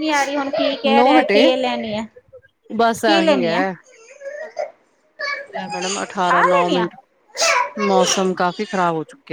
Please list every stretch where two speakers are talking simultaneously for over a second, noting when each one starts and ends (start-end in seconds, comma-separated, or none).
none